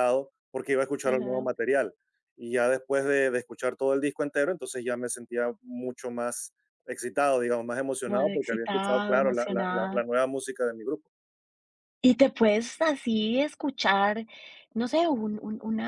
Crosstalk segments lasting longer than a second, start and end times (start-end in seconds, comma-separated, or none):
8.0-10.1